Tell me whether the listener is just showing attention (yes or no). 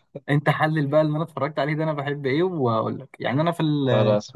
yes